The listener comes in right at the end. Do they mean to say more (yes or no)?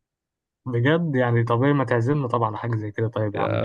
yes